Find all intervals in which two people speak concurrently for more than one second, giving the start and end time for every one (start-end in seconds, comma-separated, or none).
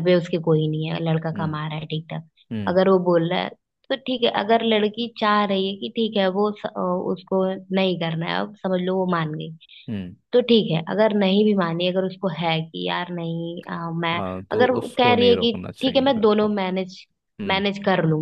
14.1-16.5